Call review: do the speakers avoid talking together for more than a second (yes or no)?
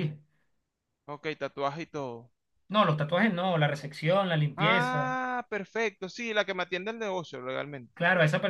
yes